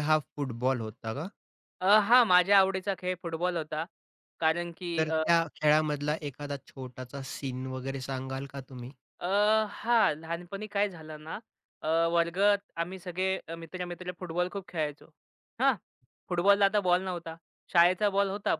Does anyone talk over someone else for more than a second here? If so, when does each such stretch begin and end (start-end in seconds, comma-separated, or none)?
none